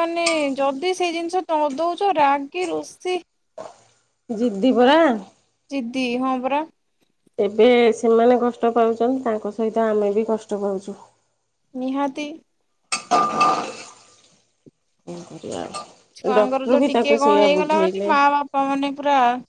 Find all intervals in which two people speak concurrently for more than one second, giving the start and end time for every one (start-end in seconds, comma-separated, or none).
16.4-18.1